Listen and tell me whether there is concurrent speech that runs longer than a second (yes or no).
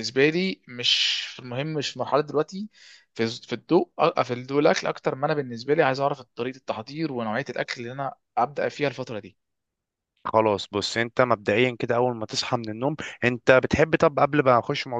no